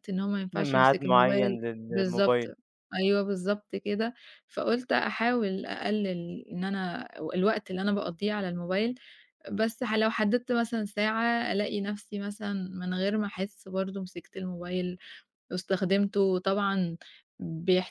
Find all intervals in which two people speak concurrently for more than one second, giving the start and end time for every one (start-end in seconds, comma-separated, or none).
0.5-2.4